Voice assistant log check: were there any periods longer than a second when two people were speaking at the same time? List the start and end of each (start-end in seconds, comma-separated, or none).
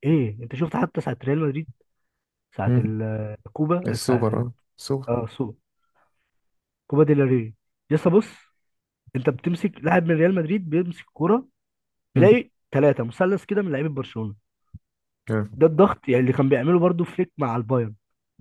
none